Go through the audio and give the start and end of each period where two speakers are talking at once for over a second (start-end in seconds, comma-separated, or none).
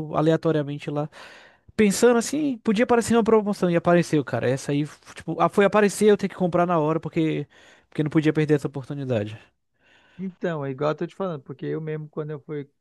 none